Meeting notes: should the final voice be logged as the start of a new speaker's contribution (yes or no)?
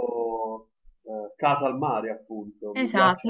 yes